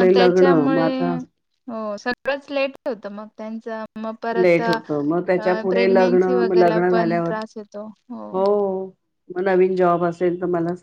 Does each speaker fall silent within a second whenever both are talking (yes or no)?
no